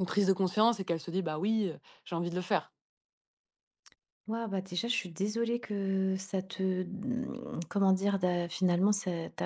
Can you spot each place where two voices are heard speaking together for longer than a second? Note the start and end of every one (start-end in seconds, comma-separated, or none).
none